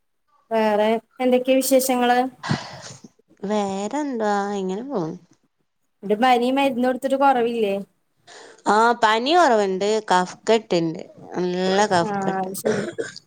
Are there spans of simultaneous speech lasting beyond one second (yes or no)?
no